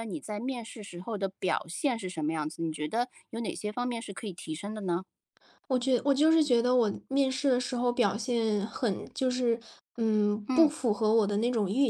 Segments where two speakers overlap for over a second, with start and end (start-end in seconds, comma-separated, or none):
none